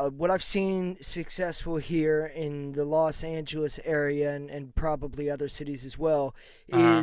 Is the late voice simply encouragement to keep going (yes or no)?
yes